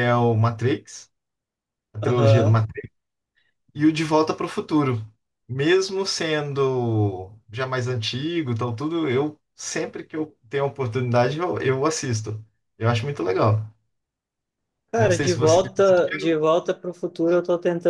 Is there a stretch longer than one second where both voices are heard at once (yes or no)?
yes